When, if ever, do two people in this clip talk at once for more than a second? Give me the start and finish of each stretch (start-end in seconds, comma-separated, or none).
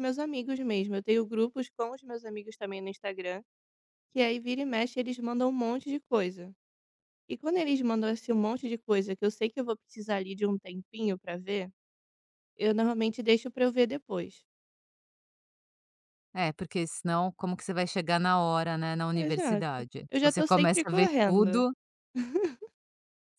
19.1-21.6